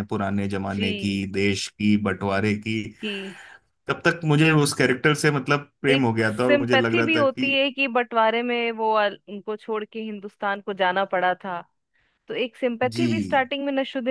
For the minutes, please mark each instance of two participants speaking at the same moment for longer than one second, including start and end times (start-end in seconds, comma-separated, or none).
5.9-7.5